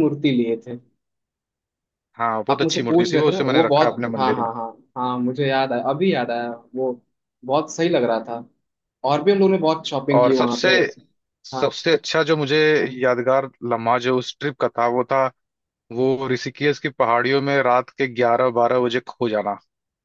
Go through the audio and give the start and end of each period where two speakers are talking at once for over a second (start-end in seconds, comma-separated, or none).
2.5-4.5